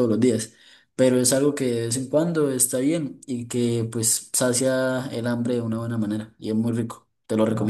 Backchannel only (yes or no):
no